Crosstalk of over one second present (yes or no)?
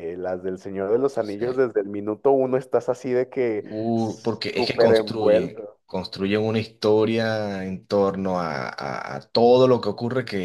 yes